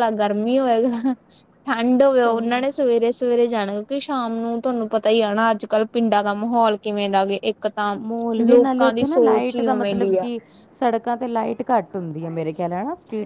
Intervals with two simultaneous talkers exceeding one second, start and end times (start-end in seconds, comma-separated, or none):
8.5-10.3